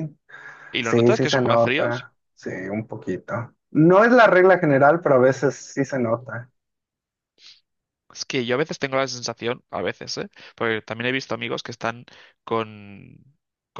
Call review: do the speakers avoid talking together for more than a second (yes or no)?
no